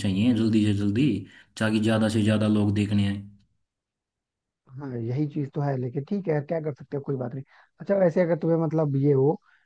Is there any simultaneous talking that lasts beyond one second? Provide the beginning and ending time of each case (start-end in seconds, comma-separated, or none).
none